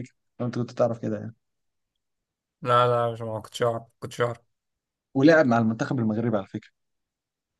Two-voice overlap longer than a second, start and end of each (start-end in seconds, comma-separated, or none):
none